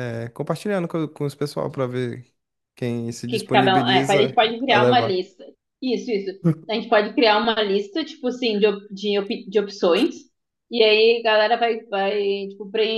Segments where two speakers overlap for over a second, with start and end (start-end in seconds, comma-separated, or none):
3.3-5.2